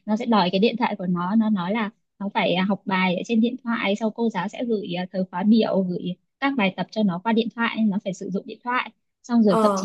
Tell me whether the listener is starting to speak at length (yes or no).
no